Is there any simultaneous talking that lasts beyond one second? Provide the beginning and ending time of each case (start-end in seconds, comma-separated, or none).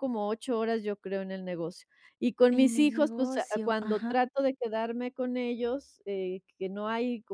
2.5-4.1